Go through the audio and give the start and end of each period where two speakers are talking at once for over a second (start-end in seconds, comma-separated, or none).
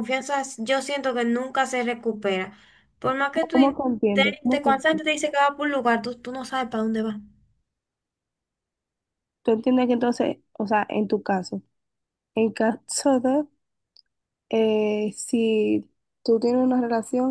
3.5-5.1